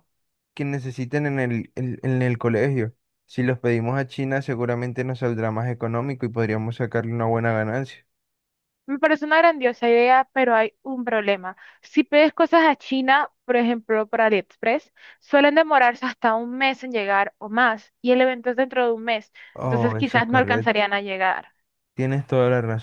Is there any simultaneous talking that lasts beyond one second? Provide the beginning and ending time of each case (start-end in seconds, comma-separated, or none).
19.5-20.8